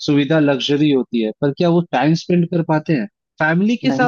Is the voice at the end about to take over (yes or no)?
no